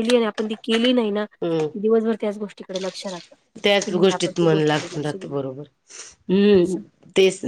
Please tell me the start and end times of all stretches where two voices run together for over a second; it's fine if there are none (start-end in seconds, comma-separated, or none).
none